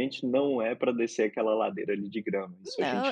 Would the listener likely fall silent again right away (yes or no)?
no